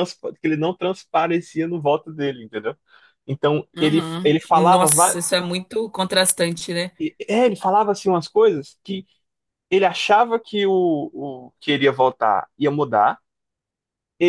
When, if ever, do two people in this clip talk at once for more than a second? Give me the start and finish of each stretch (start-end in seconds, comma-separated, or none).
3.8-5.3